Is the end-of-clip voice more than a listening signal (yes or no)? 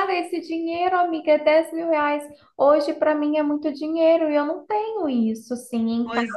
yes